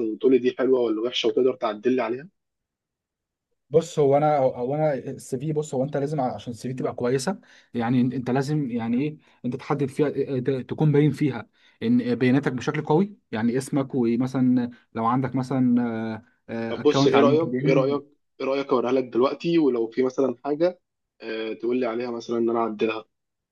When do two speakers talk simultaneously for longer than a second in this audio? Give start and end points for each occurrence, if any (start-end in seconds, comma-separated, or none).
16.7-18.0